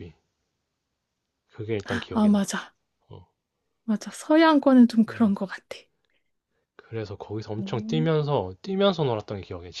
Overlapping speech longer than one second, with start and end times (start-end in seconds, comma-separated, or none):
none